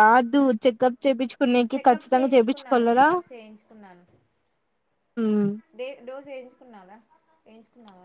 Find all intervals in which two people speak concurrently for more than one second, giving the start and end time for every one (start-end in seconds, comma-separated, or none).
1.7-3.0